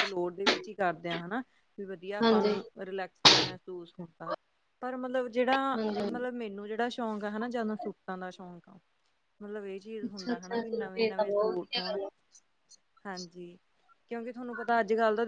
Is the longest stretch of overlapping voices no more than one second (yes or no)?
no